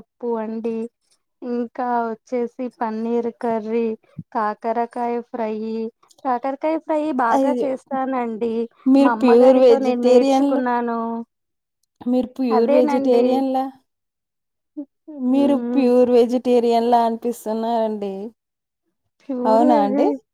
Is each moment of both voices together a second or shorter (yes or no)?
no